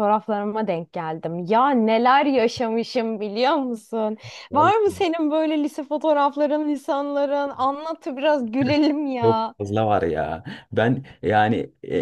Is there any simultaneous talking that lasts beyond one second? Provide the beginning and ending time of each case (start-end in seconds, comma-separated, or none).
none